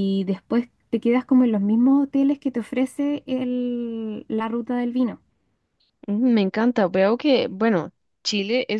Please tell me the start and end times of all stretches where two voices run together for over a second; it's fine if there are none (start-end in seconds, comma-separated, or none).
none